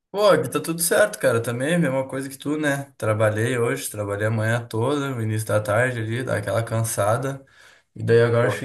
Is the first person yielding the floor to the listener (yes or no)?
no